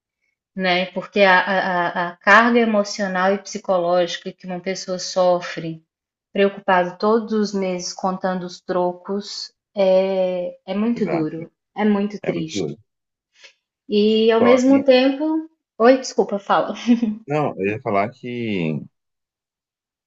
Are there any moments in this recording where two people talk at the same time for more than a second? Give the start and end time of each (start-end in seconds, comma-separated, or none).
none